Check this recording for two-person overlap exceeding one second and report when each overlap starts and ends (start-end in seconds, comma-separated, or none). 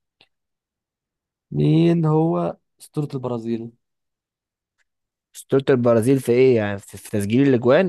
none